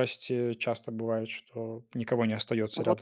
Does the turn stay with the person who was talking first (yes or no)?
no